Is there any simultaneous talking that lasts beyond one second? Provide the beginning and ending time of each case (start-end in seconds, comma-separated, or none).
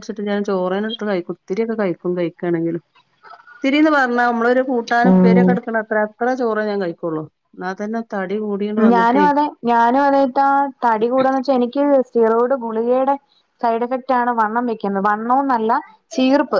none